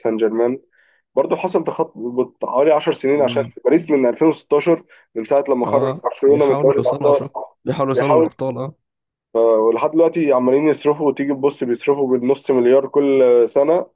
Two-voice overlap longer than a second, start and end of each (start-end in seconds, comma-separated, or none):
5.6-7.2